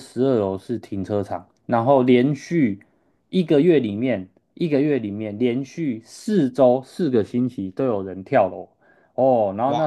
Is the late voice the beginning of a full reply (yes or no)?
no